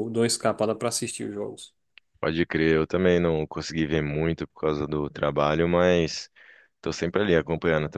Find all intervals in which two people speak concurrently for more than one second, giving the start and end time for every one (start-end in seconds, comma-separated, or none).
none